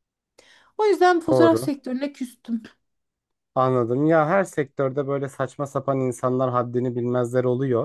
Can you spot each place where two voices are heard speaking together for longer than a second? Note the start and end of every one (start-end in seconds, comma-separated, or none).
none